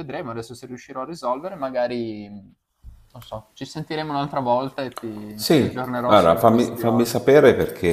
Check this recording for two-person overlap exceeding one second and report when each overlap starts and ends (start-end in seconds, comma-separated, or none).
5.3-7.2